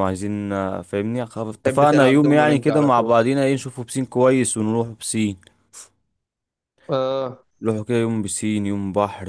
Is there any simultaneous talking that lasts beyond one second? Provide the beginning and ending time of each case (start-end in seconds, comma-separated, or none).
1.6-3.1